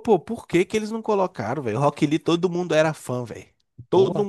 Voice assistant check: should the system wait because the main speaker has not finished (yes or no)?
no